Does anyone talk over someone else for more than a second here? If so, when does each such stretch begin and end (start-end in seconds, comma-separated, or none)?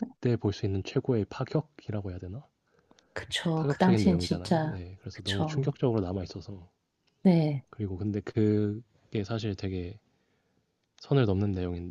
3.5-5.7